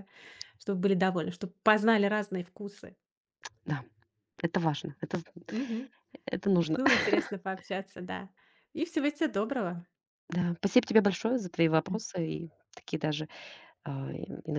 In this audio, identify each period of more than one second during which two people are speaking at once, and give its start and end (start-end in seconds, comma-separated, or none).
none